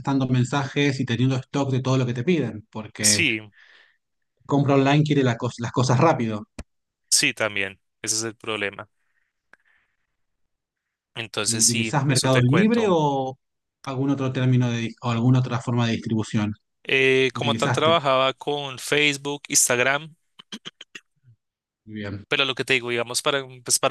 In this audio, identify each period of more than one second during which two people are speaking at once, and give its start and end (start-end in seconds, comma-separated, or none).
11.4-13.0